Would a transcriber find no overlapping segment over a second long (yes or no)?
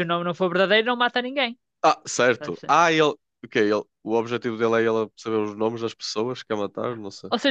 yes